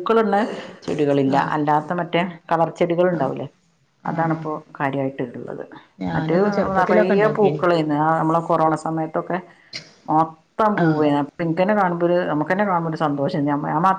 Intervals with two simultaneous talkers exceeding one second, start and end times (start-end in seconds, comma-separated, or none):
6.1-7.6